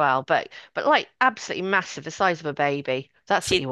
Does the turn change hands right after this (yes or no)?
yes